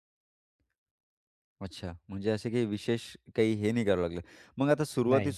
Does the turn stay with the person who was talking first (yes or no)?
yes